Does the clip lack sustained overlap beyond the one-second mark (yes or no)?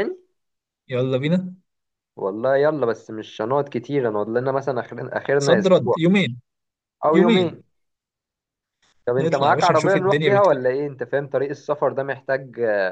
no